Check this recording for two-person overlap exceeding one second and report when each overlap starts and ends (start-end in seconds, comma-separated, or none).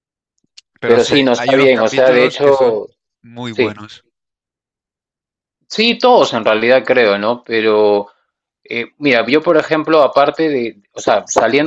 0.8-2.9